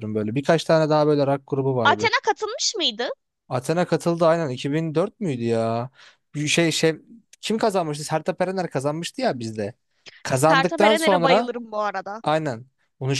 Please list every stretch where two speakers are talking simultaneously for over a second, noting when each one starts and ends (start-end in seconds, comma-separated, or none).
10.3-11.5